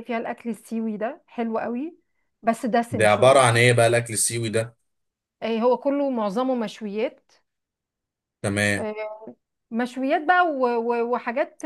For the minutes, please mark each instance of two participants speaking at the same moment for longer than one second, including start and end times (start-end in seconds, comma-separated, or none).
none